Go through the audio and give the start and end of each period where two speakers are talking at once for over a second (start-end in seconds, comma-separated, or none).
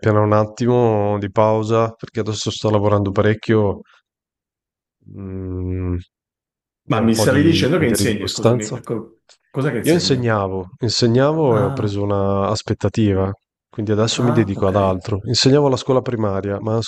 6.9-8.8